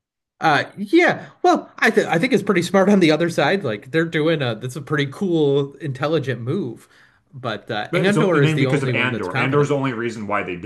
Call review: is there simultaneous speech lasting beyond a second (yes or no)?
yes